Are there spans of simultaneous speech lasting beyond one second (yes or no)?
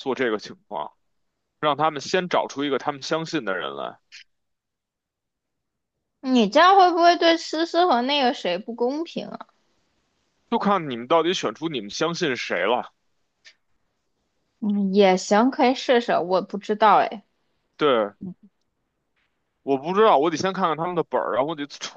no